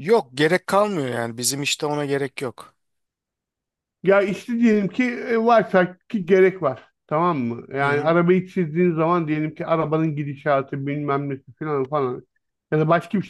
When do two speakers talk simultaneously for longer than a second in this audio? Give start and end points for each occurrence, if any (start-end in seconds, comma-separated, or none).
none